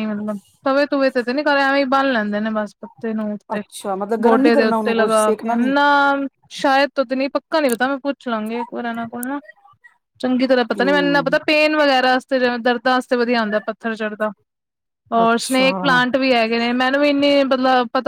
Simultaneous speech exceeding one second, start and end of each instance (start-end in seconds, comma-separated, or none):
4.2-5.7